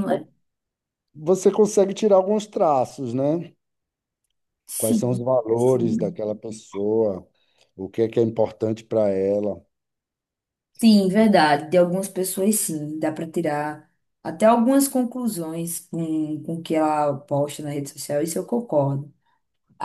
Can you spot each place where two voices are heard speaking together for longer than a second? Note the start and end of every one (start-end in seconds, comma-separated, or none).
4.8-6.2